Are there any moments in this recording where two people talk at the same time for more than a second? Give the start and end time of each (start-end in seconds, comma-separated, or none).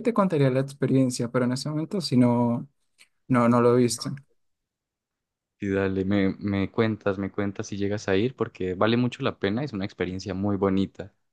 none